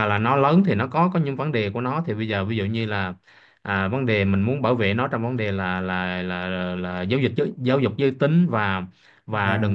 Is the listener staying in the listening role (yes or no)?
yes